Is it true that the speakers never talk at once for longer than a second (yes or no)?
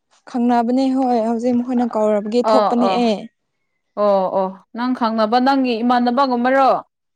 yes